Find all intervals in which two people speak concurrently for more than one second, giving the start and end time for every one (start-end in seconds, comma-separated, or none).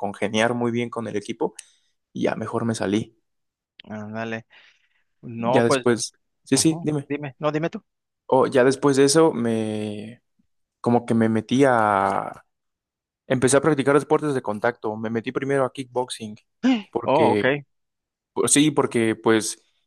none